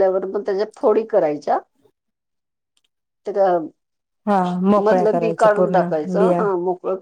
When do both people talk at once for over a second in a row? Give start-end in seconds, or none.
4.8-6.4